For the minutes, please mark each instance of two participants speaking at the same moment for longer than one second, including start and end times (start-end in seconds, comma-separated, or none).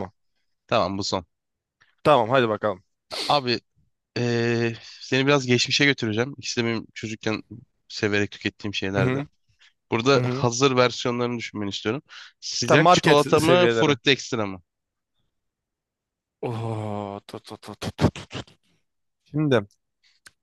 12.6-14.0